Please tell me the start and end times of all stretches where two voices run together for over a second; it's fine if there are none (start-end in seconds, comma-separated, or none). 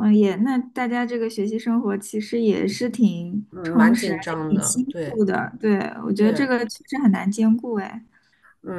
3.5-5.2